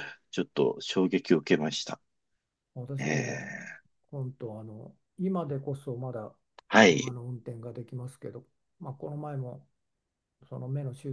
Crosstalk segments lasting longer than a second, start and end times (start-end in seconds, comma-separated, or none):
none